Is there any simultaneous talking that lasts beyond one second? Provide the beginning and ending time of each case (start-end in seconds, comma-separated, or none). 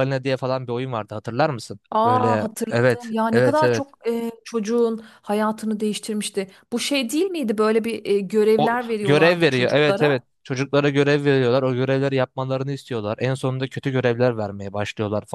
1.9-3.8, 8.6-10.2